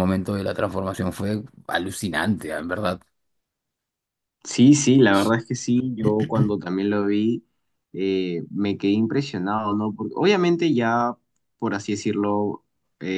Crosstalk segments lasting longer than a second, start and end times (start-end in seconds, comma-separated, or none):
none